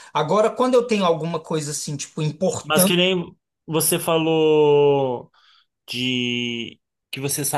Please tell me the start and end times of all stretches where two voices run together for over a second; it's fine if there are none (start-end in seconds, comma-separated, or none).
none